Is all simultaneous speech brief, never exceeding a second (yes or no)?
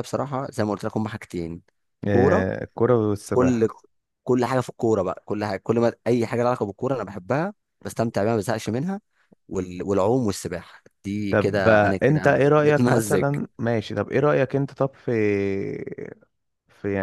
no